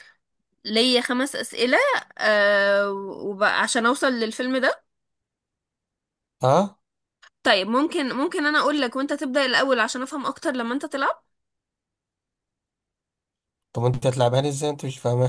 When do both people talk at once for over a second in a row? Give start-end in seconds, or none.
none